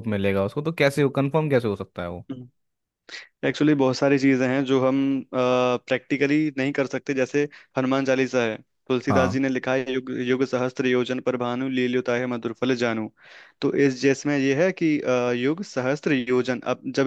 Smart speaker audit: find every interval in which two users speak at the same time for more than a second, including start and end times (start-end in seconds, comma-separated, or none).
none